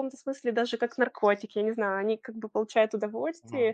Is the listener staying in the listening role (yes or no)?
yes